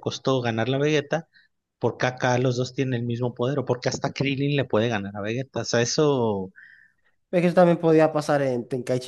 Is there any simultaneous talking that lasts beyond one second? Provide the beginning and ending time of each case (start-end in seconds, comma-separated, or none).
none